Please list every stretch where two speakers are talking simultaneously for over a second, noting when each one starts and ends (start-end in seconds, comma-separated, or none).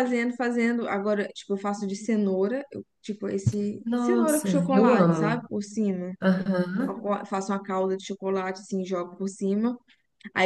3.8-5.4